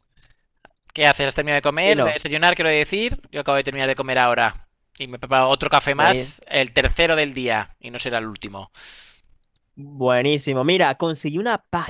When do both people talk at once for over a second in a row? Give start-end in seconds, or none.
none